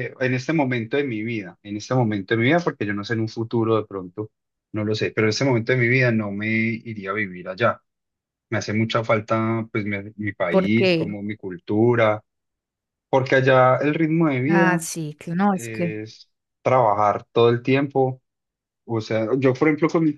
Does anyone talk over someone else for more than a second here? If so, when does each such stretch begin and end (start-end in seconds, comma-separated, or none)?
none